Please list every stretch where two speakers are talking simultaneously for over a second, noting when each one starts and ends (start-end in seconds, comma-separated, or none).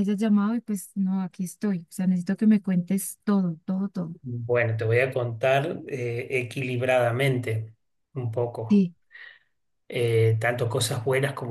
none